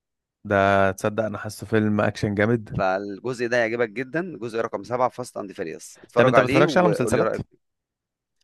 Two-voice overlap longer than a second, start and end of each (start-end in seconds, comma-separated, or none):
6.1-7.3